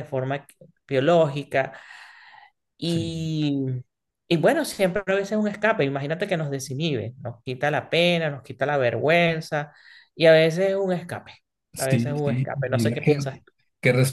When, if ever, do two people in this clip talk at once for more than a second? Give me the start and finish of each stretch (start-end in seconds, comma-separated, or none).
11.8-13.1